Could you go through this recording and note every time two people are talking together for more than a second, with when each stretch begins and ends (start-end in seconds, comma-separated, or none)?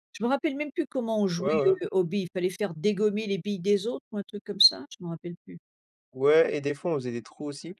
none